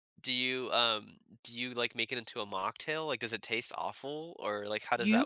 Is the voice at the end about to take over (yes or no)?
yes